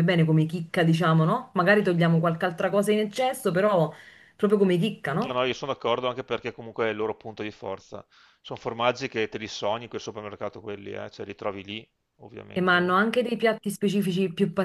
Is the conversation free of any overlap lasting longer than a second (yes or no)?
yes